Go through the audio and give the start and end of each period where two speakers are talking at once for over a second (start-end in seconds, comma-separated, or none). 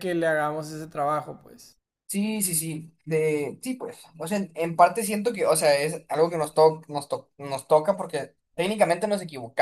none